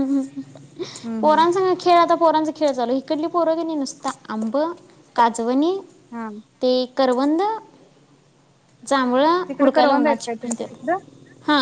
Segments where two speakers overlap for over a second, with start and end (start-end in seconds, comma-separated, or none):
9.6-11.0